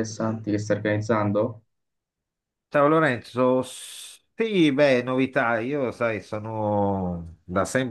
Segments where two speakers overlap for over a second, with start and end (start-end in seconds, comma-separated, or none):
none